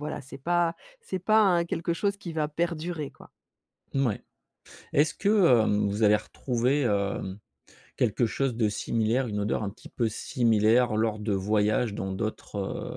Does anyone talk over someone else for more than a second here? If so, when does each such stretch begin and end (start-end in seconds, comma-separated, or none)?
none